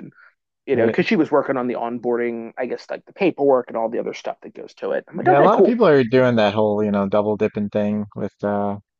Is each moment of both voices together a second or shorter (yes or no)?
yes